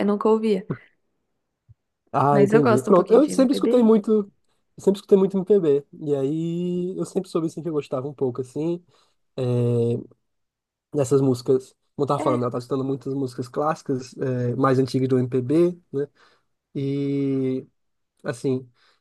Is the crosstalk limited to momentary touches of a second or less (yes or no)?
no